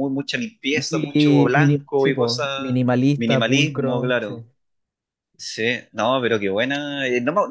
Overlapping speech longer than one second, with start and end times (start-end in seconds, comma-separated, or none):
0.7-4.3